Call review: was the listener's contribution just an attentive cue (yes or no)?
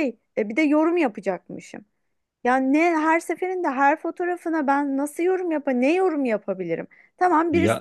yes